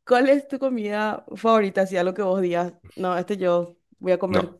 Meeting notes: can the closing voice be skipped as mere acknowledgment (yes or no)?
no